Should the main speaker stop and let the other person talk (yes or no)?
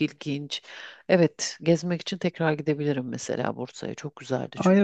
yes